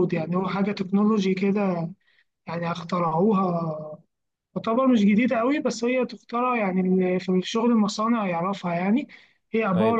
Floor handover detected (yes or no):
yes